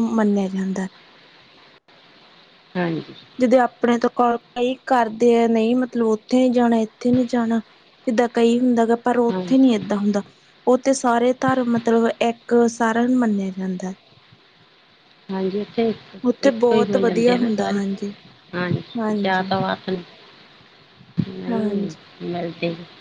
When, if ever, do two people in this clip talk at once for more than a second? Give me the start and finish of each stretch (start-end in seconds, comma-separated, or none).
16.5-17.8